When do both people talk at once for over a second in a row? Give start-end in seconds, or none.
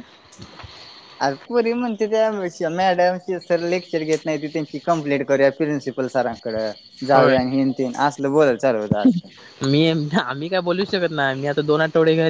none